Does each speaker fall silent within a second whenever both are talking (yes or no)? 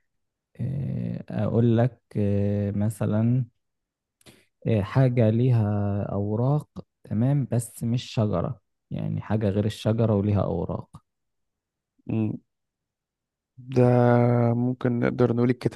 yes